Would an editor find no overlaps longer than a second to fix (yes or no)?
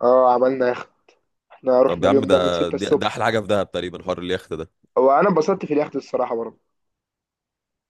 no